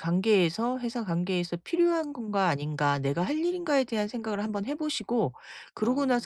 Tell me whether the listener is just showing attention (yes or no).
yes